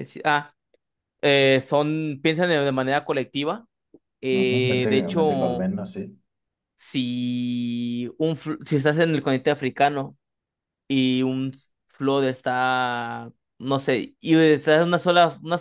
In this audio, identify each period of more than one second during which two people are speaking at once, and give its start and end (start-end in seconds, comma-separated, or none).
4.3-5.7